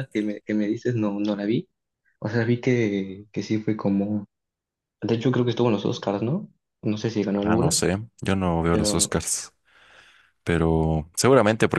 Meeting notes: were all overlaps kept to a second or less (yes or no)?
yes